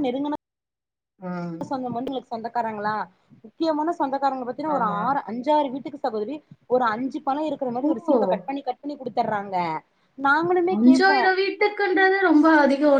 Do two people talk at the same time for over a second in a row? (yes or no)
no